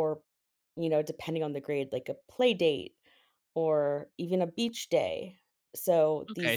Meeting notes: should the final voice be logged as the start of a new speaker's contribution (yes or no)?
yes